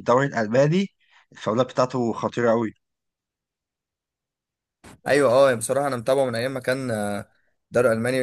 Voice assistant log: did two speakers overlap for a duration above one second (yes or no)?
no